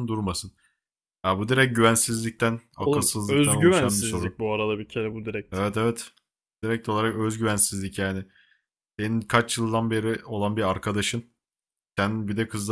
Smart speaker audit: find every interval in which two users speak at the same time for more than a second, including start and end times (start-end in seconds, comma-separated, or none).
2.8-4.4